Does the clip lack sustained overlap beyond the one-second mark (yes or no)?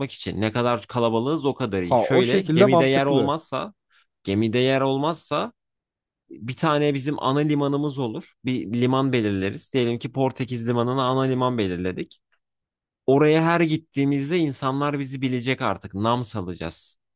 no